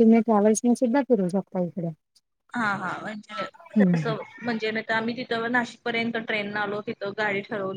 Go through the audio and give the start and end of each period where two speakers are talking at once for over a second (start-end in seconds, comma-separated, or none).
none